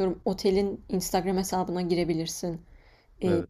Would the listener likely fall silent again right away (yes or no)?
yes